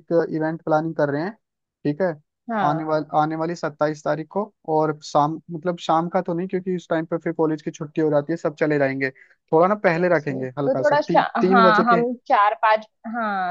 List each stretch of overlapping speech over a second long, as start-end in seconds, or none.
10.0-12.0